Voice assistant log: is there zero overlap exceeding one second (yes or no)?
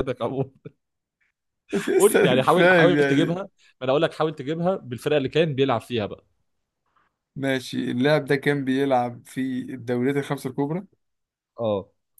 no